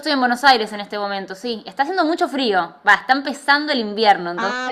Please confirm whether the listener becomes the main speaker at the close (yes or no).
yes